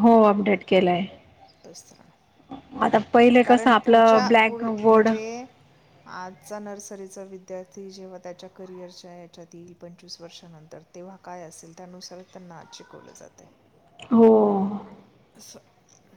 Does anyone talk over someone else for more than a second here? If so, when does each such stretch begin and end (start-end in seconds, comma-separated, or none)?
3.4-5.1